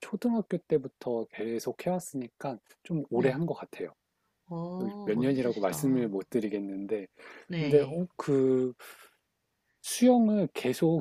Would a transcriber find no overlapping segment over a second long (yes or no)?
no